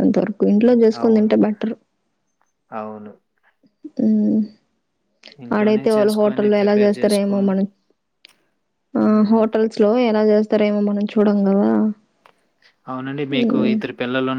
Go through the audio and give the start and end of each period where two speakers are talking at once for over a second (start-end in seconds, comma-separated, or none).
5.6-7.3